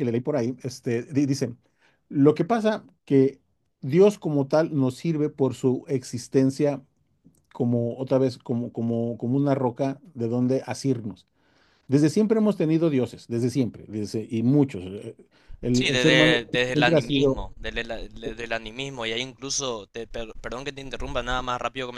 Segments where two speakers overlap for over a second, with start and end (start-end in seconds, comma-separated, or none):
15.7-17.4